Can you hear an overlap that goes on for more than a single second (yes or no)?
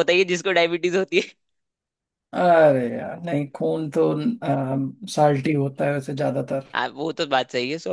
no